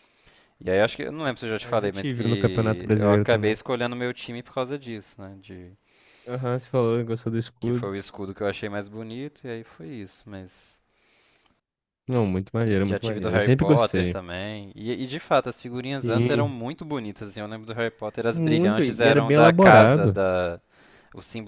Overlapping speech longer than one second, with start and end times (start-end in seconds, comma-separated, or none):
1.6-3.6, 12.8-14.2, 18.3-20.2